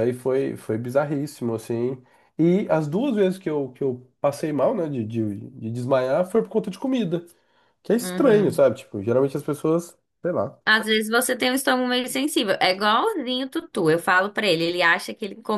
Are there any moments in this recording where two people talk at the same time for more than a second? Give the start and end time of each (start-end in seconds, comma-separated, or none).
none